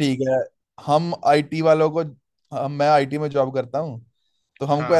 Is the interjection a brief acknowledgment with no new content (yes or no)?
yes